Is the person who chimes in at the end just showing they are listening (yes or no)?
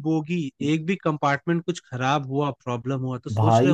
no